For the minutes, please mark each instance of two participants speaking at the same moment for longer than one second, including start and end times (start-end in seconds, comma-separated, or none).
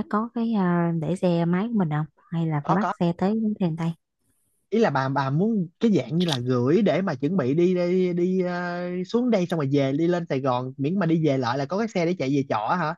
none